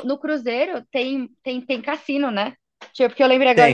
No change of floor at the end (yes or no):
yes